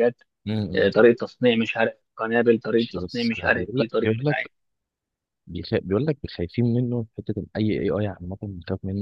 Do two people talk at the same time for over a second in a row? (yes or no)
yes